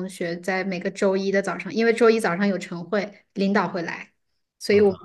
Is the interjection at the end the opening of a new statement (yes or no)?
no